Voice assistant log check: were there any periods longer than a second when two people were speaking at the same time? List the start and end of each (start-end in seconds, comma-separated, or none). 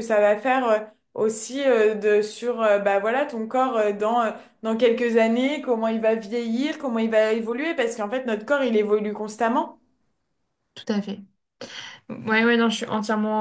none